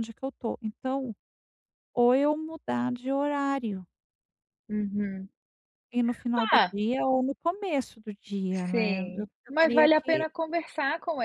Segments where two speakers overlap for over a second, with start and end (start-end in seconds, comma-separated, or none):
8.5-10.2